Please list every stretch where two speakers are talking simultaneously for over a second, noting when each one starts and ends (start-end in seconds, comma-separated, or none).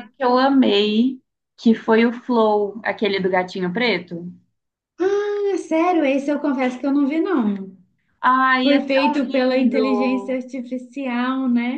8.6-10.4